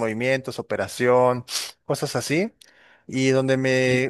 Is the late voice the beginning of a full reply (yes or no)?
no